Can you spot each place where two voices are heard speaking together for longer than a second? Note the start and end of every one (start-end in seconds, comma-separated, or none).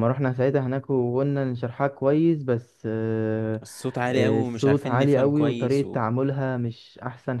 4.1-6.0